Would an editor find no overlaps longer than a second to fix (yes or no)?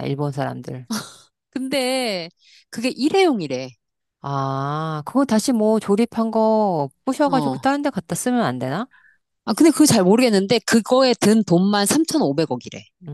yes